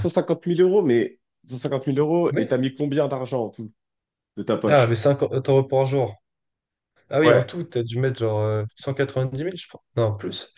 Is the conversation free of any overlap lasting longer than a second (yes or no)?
yes